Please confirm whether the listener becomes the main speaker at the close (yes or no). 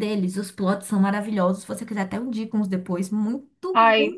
no